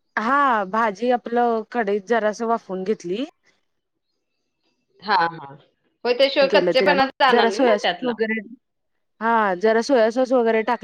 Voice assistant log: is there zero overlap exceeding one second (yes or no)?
no